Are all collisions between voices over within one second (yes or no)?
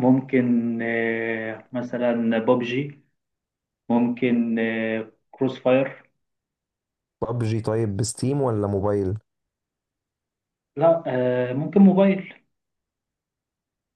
yes